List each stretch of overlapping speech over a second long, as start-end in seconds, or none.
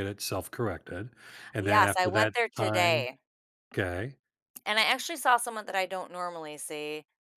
1.6-3.1